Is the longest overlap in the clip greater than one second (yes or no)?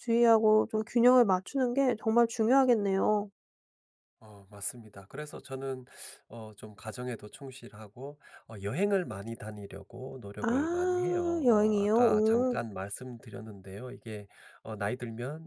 yes